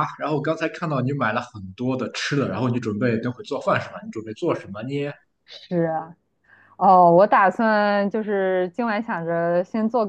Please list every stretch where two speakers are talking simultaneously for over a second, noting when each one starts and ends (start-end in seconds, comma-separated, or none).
none